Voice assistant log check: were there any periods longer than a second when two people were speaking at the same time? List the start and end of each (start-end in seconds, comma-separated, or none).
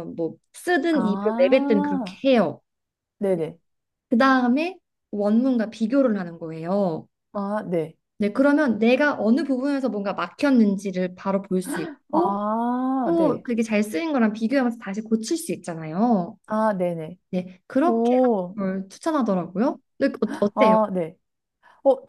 0.9-2.2